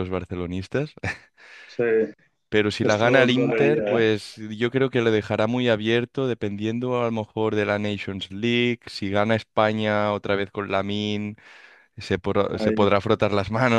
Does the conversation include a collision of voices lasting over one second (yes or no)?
yes